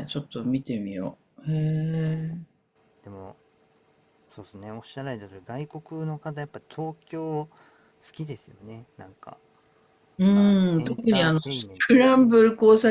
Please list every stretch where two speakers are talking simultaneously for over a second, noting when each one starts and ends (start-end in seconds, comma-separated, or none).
10.3-11.9